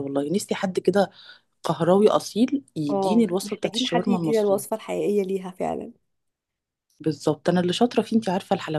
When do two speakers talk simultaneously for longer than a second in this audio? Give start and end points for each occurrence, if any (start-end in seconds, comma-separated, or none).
2.9-4.6